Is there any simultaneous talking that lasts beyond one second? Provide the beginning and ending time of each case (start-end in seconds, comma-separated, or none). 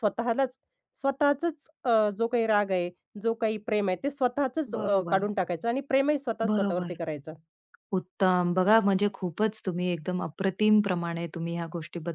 none